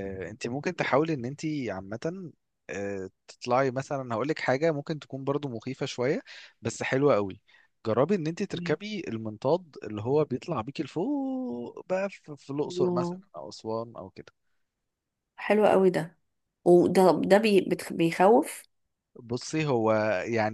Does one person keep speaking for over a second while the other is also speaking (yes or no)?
no